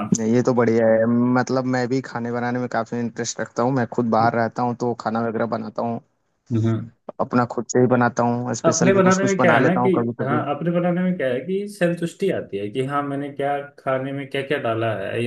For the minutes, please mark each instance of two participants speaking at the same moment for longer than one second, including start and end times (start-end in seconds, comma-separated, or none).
8.7-10.4